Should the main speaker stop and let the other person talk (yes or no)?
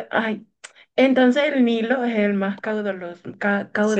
yes